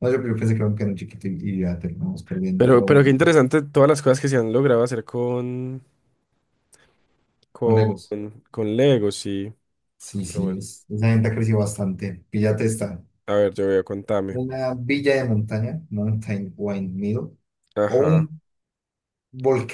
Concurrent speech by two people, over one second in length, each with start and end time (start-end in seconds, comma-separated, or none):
none